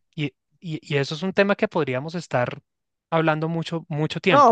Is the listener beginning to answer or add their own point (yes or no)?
yes